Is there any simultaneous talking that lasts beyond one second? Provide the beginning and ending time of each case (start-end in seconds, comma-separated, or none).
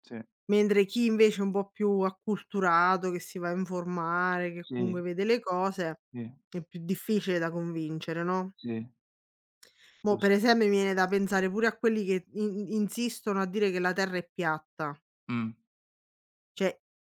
none